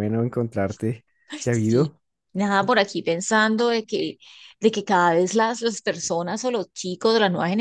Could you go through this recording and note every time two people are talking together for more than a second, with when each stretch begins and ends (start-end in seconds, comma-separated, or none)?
none